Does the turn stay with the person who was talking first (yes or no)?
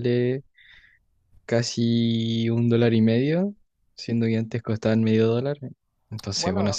no